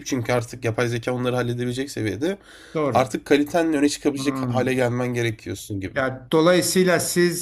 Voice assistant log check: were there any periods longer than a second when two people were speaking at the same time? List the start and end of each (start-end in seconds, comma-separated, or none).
none